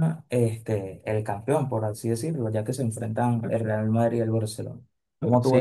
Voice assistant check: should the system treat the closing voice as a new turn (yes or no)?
yes